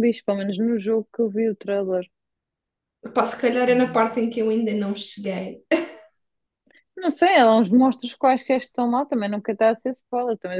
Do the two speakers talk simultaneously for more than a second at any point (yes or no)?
no